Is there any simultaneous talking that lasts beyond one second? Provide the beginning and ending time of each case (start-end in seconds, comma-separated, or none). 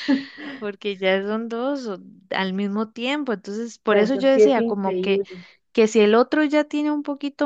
3.9-5.2